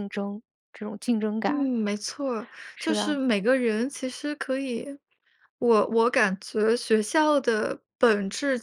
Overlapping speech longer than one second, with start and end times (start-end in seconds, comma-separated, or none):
none